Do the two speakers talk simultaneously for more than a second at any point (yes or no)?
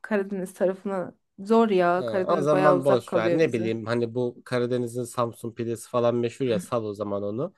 yes